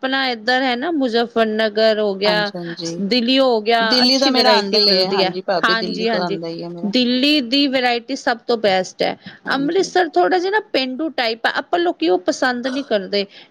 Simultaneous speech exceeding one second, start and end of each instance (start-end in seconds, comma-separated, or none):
3.9-6.4